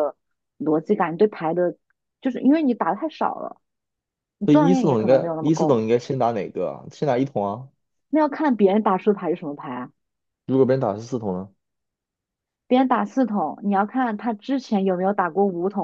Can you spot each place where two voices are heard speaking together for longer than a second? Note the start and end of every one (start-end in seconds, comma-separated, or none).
4.5-5.8